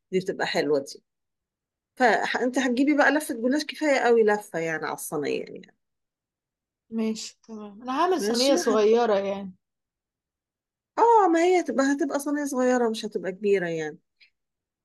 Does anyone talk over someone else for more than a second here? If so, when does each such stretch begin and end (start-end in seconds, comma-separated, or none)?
none